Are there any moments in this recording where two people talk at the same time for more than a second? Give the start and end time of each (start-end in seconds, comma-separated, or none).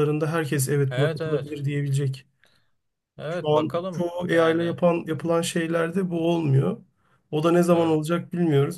3.3-5.2